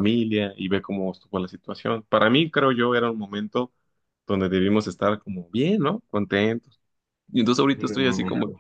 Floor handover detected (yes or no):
no